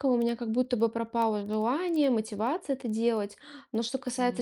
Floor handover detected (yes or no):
no